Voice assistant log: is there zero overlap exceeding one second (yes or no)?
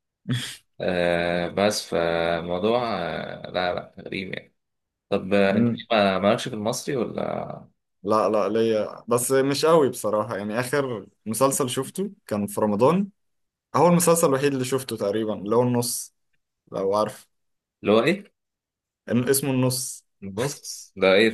yes